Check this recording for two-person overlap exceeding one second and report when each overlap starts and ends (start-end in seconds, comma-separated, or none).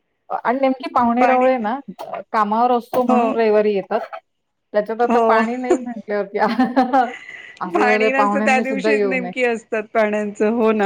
7.7-9.3